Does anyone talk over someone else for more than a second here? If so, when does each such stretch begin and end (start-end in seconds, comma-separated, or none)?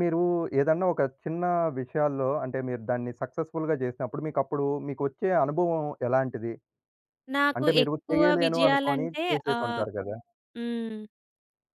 7.6-9.8